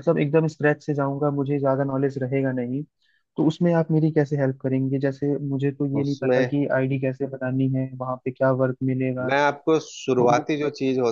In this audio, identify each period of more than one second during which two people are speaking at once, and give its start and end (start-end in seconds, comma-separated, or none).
none